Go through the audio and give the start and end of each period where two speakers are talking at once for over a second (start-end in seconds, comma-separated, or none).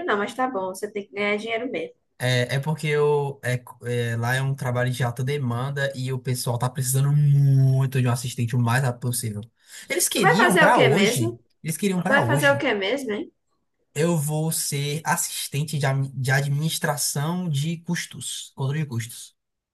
10.1-11.3